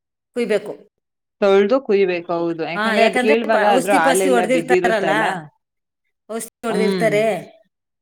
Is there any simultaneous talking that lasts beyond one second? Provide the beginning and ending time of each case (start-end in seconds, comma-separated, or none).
3.6-5.1